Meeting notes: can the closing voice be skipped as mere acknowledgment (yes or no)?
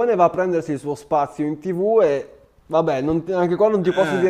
yes